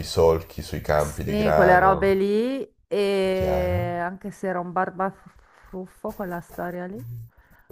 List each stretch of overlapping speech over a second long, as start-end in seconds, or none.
0.9-2.1